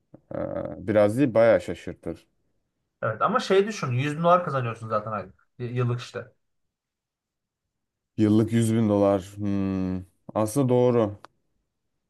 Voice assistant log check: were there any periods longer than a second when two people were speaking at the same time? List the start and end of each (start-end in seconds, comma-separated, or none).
none